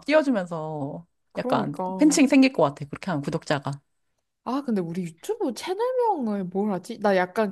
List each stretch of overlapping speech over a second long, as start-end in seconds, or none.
none